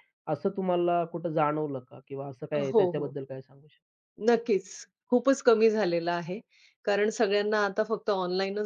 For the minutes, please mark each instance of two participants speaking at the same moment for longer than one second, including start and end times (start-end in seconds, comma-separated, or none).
none